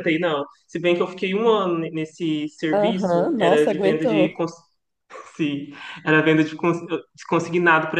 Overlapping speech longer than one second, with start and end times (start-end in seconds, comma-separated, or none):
2.7-4.4